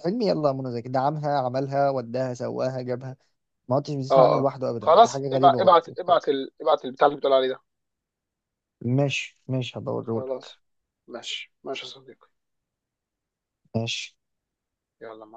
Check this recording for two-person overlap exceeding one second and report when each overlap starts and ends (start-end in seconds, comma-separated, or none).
4.1-5.8